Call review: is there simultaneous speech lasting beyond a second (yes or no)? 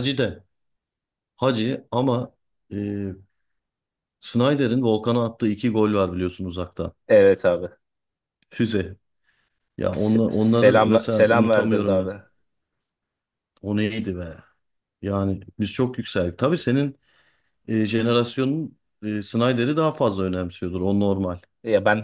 yes